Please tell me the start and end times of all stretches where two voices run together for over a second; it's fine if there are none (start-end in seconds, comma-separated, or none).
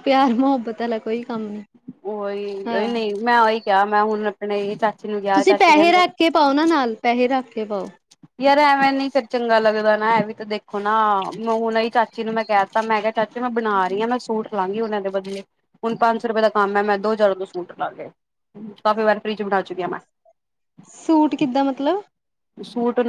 none